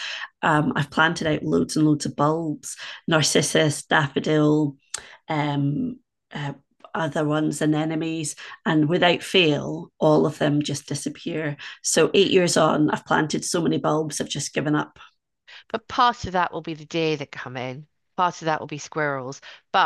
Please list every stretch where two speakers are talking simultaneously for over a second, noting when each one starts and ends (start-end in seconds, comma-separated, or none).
none